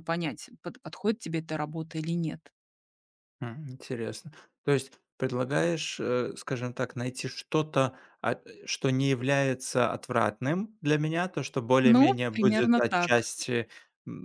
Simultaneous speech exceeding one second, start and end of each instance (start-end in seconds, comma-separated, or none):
11.8-13.2